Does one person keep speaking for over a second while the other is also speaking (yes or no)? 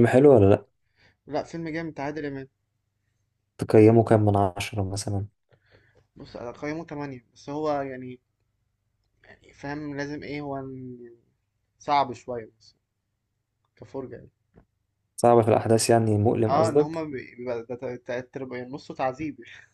no